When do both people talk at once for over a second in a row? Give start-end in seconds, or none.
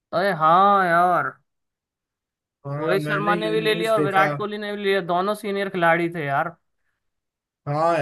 2.8-4.3